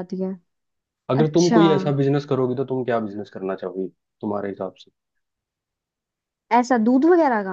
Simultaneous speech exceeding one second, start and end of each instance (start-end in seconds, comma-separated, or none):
none